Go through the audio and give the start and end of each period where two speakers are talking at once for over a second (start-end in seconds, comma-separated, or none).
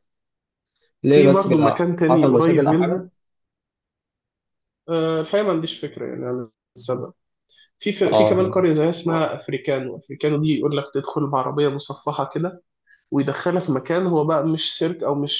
1.1-3.0